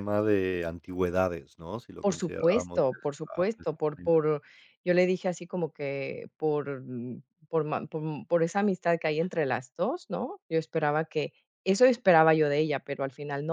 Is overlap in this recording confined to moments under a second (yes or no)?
no